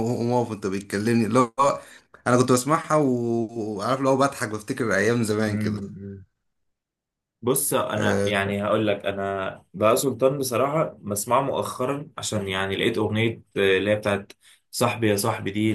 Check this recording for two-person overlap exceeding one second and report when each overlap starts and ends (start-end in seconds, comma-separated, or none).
none